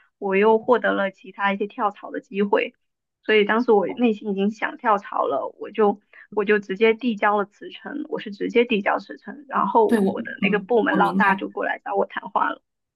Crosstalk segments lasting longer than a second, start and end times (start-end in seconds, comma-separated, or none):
9.9-11.5